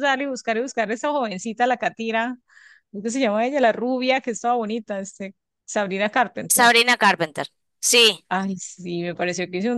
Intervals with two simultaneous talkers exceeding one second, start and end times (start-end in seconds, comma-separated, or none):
none